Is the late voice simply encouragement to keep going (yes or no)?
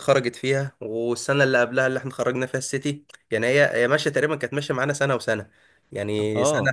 yes